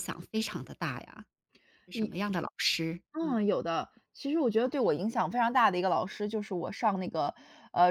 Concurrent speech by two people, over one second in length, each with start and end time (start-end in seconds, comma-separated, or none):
none